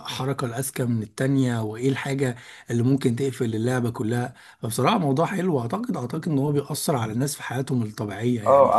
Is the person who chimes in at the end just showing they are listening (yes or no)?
no